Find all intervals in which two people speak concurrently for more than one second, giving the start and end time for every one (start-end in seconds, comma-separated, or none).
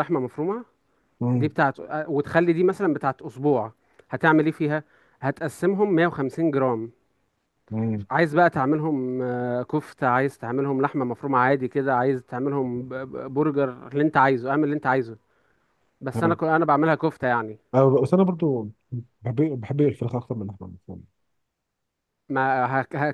none